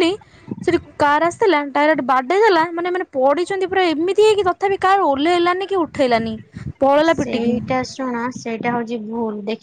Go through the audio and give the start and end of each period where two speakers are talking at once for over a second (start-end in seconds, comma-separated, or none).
none